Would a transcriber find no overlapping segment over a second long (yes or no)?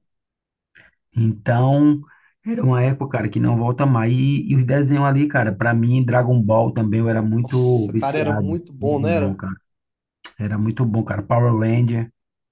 no